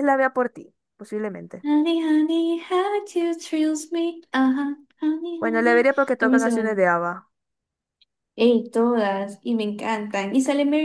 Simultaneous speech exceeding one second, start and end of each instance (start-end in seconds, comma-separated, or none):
5.4-6.8